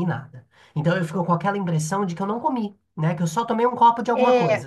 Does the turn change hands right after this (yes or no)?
yes